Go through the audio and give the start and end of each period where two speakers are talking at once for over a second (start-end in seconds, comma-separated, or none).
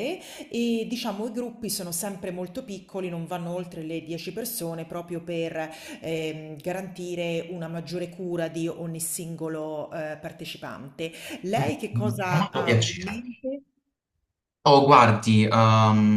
11.9-13.2